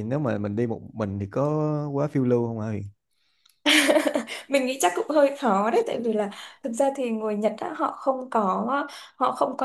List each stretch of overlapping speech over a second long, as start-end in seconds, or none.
none